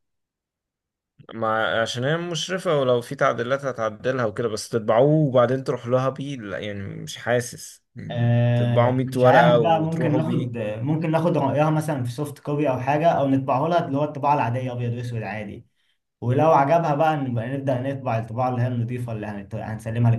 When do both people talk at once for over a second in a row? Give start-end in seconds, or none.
8.1-10.5